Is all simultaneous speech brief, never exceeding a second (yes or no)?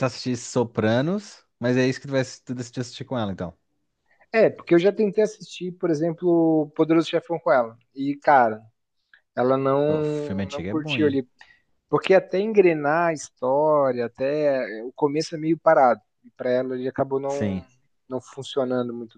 no